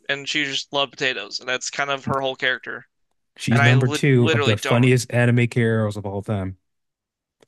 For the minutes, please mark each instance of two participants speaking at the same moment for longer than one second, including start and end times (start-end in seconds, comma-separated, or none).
3.5-4.9